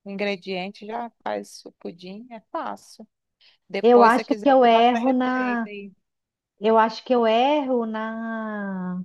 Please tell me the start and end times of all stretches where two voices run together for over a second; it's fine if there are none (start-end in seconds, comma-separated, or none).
3.8-5.7